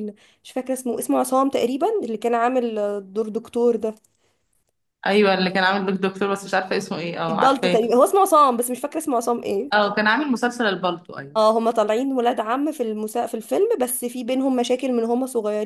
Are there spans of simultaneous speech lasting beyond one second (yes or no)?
no